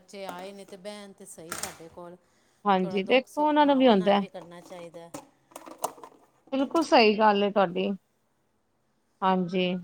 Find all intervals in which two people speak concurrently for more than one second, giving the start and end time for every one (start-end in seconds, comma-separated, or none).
2.8-4.2